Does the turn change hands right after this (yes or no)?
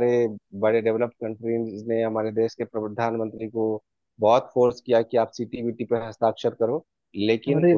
no